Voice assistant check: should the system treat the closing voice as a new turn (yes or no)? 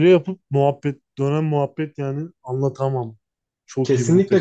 yes